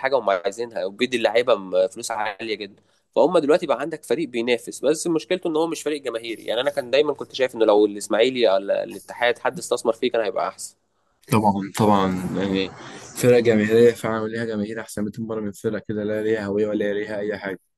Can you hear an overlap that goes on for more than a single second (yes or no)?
no